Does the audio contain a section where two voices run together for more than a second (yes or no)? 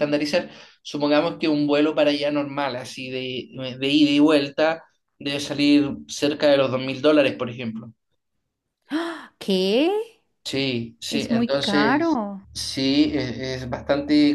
yes